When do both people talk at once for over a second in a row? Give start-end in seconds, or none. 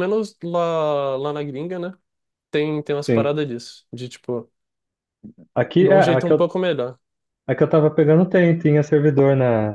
none